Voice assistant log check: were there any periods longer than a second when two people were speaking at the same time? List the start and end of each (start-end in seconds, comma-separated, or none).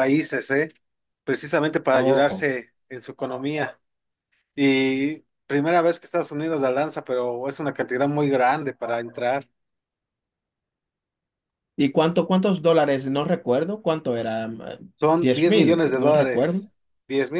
15.2-16.7